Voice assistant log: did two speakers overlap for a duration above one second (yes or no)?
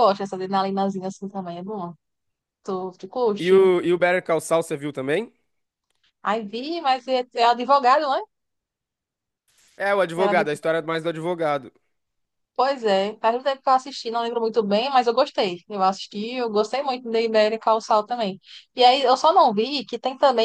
no